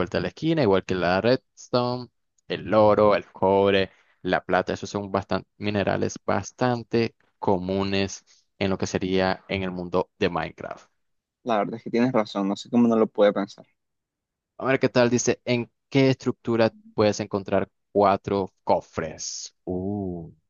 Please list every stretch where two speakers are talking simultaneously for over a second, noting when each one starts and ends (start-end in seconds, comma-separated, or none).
none